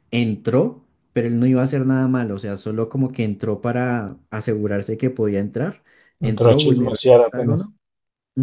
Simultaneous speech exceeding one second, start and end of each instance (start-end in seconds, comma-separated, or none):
6.2-7.7